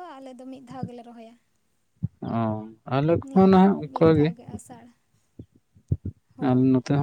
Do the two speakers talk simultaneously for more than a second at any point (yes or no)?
no